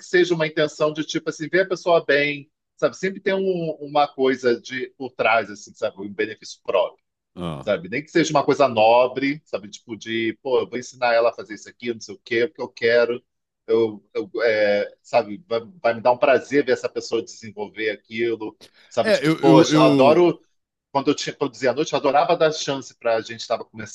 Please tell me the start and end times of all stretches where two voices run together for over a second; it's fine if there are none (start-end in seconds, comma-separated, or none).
19.0-20.3